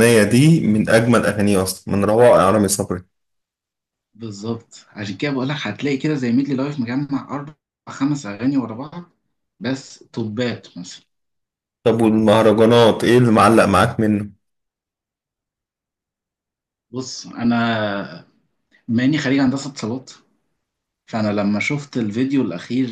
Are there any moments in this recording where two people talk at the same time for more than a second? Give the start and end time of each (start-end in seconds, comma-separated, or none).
none